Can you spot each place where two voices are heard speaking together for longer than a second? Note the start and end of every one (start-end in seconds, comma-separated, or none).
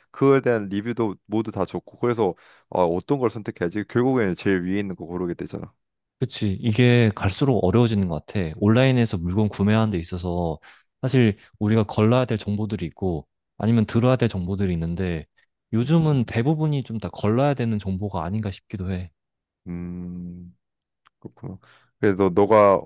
none